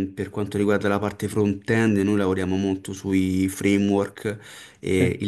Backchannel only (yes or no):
yes